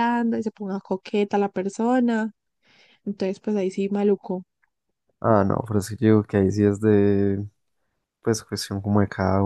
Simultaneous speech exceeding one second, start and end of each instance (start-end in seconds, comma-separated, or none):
none